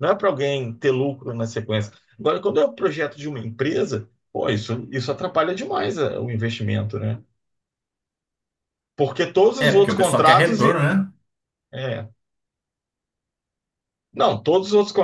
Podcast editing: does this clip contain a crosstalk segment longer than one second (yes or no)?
yes